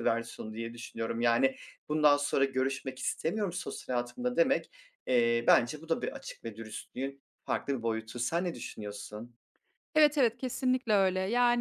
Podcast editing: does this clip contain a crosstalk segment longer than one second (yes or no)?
no